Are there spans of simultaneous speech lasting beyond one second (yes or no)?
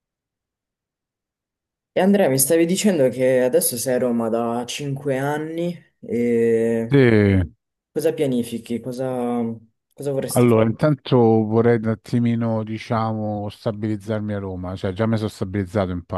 no